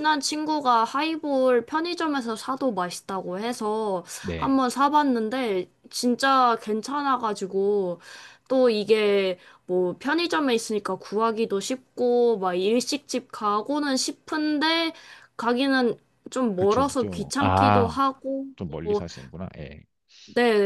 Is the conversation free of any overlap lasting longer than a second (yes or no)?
no